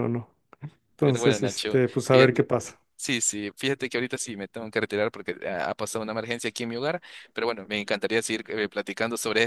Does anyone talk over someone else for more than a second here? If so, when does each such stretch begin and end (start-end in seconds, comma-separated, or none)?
1.0-2.5